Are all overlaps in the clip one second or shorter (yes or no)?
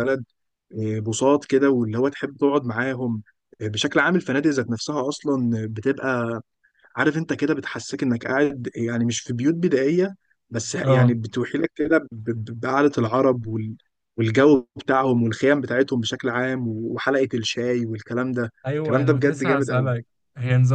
no